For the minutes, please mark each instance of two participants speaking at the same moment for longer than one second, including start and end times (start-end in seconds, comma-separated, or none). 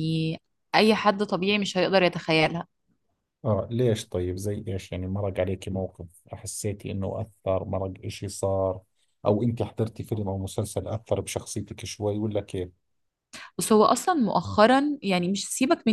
none